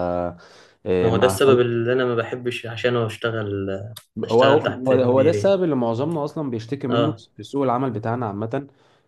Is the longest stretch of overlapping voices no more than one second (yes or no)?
no